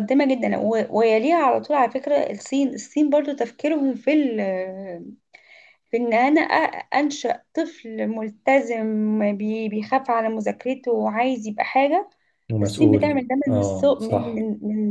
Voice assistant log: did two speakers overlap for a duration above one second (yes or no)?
yes